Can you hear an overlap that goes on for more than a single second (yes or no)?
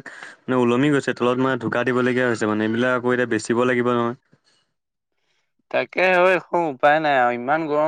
no